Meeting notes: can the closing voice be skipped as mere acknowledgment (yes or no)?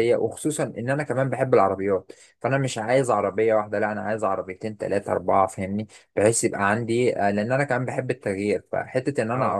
yes